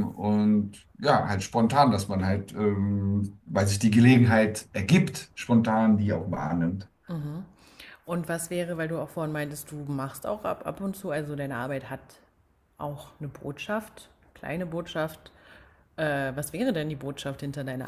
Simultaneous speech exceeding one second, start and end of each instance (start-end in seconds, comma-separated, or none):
none